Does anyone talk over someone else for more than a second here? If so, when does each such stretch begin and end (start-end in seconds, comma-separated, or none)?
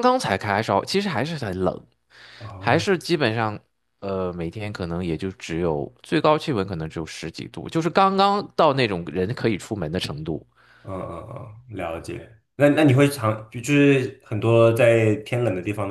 none